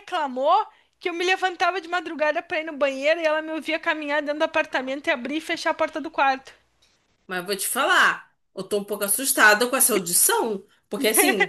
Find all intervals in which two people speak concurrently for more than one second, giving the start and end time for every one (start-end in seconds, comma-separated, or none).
none